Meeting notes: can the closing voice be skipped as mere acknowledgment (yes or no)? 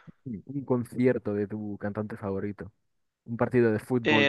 yes